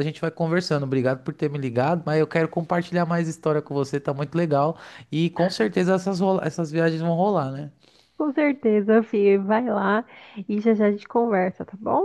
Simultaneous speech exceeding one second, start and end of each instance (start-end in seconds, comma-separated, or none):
none